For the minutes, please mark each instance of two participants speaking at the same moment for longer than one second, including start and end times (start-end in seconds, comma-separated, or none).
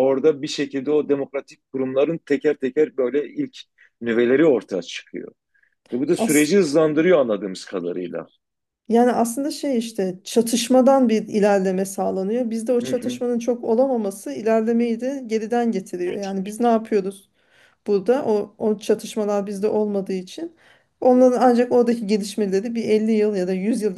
none